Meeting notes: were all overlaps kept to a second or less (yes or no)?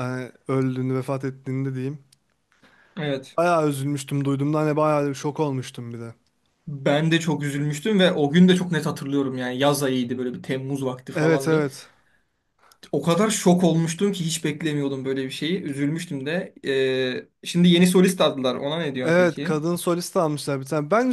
yes